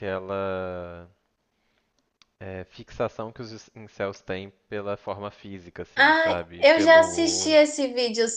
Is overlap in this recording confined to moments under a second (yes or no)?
no